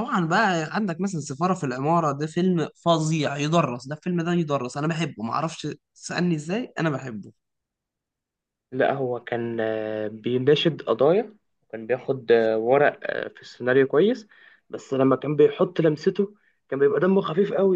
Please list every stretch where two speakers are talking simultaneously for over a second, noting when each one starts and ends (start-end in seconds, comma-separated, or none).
none